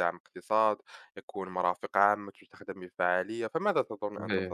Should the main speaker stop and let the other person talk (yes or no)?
yes